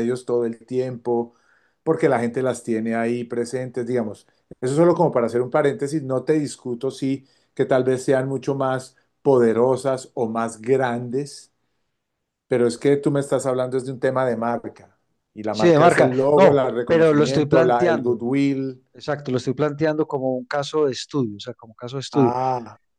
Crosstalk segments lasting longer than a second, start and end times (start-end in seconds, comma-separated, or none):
15.5-18.1